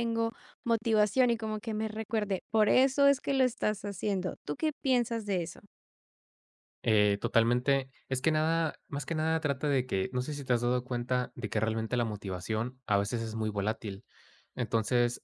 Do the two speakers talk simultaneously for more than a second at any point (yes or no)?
no